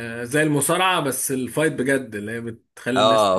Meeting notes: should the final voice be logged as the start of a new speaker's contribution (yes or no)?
yes